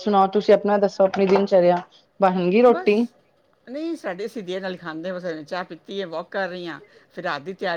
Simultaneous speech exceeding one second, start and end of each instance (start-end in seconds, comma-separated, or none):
none